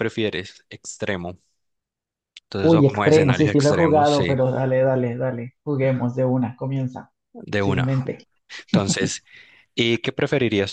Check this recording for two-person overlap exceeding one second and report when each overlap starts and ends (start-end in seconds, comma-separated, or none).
2.6-4.3